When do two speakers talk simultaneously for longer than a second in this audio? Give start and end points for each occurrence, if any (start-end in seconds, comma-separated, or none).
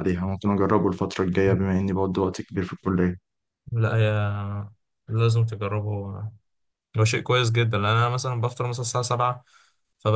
none